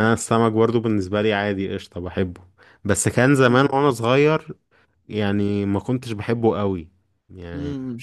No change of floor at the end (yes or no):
yes